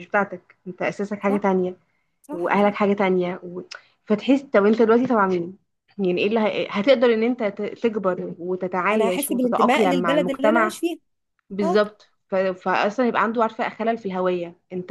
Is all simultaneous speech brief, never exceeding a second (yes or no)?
no